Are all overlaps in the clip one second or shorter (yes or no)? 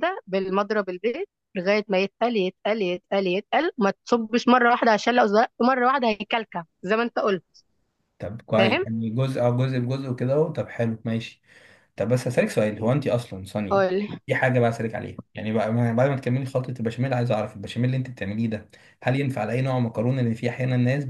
yes